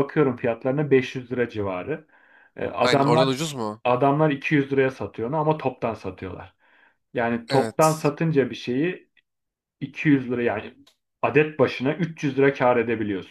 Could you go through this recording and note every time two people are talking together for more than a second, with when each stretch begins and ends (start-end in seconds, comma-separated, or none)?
none